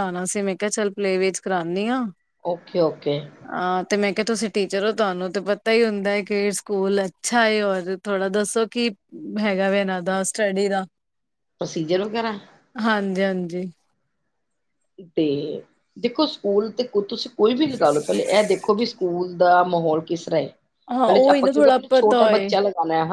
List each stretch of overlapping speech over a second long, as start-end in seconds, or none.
21.1-22.5